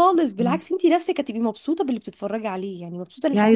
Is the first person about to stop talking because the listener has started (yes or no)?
yes